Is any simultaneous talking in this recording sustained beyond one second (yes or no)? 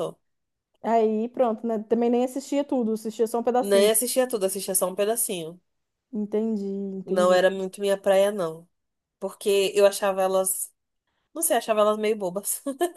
no